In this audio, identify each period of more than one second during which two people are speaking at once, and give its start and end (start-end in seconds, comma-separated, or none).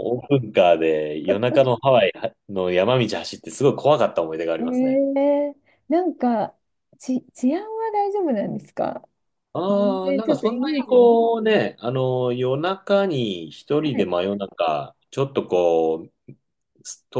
9.7-11.1